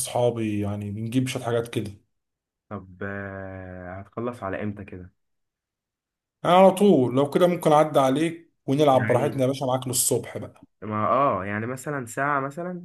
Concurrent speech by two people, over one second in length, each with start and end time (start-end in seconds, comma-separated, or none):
none